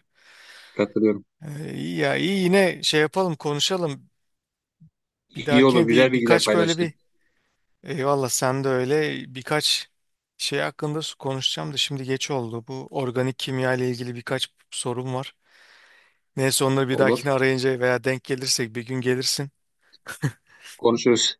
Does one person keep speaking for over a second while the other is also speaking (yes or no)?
yes